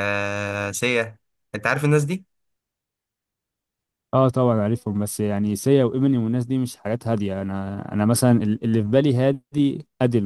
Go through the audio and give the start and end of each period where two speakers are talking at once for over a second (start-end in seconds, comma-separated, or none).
none